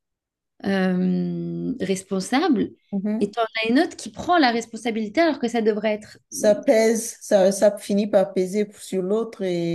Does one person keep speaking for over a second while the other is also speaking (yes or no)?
no